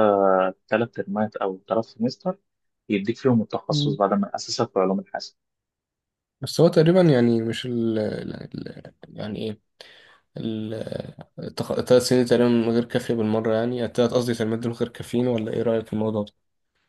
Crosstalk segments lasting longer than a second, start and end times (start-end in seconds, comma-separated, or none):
none